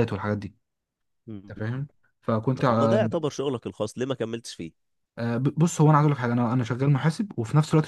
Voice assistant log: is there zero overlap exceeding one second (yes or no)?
yes